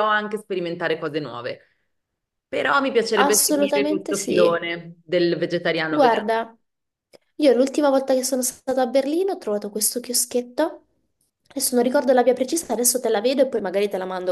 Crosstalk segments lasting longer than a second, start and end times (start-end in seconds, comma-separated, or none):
3.2-4.7